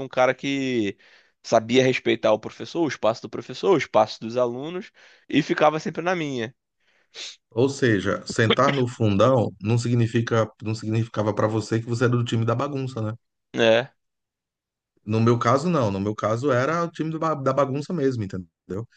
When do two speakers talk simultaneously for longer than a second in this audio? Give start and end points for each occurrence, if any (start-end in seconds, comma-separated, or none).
none